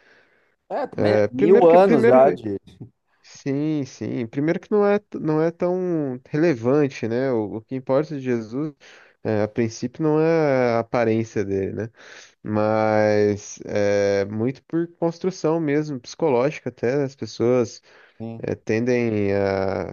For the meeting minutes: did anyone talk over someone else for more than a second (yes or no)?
yes